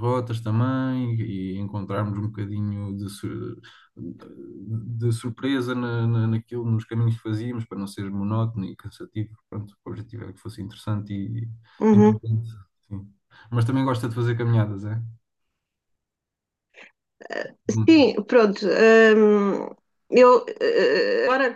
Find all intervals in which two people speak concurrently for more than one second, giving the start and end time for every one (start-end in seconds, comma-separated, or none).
none